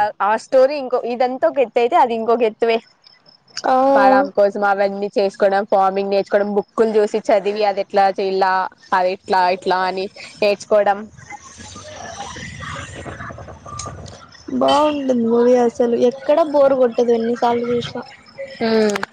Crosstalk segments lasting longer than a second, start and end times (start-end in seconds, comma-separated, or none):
none